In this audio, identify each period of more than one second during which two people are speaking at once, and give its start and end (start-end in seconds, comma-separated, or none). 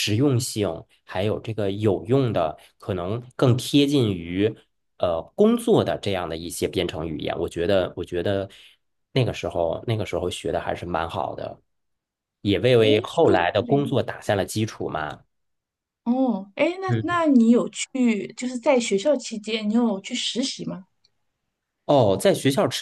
12.8-14.0